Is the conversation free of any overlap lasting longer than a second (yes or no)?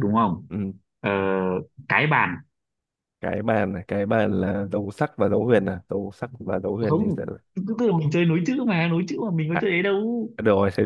yes